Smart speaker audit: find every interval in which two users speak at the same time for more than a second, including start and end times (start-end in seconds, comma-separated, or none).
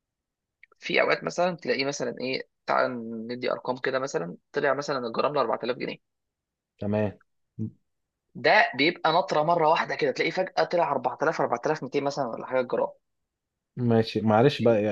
none